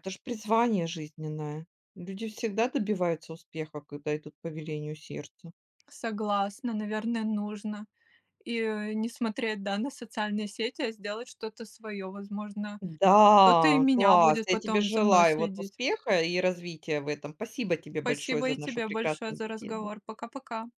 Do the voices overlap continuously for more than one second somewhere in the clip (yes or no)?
yes